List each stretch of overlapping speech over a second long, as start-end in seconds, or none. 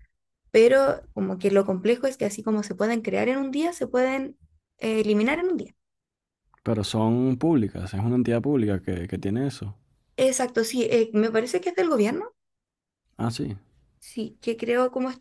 none